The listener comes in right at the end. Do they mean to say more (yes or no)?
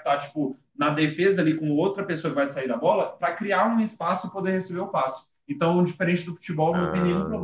no